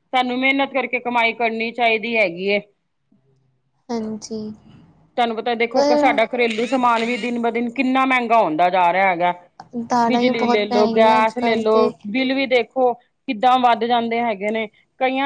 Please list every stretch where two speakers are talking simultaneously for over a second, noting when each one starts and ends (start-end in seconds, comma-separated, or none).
10.1-11.9